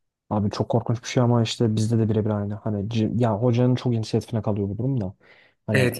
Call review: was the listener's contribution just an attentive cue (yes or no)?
no